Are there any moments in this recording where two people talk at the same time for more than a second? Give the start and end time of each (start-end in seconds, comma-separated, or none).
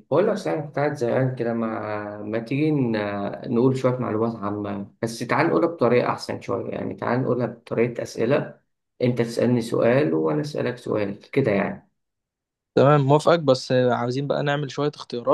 none